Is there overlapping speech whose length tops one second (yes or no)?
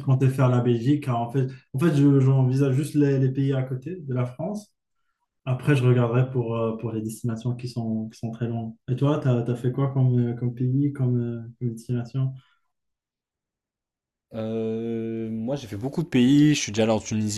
no